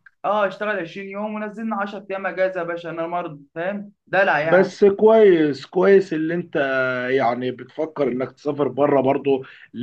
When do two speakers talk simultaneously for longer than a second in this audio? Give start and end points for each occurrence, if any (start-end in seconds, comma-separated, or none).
none